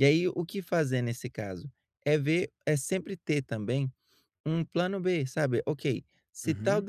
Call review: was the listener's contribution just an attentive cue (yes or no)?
yes